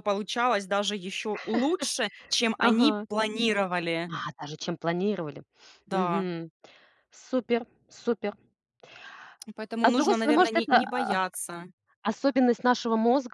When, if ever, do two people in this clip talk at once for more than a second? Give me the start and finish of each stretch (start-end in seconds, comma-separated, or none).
9.8-11.2